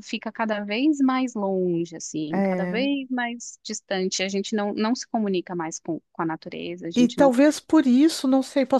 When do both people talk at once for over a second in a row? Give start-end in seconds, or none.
none